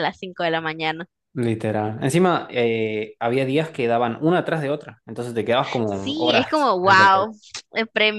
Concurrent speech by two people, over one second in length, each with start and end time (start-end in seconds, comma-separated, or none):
5.8-7.3